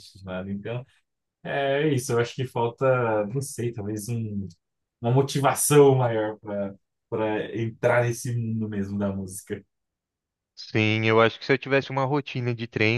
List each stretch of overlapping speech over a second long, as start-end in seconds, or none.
none